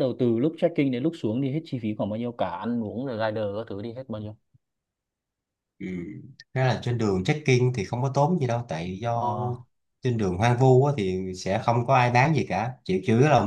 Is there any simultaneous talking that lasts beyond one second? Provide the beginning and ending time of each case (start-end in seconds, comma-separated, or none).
none